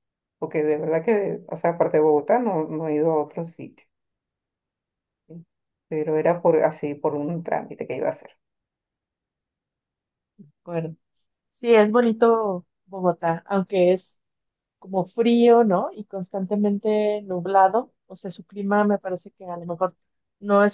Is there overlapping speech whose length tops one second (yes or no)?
no